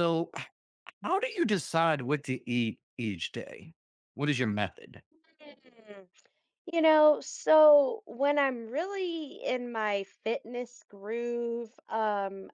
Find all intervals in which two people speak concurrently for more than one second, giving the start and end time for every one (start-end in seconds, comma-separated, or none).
none